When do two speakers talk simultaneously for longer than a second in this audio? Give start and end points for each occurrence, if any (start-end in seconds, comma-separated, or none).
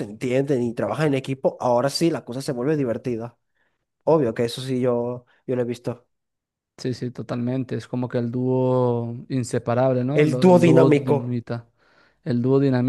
10.1-11.4